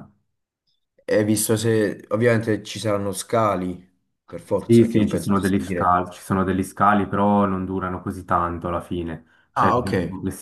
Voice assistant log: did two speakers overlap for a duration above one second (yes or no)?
yes